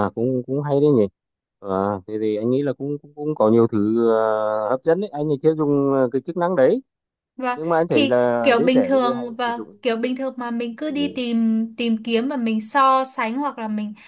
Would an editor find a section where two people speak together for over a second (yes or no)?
yes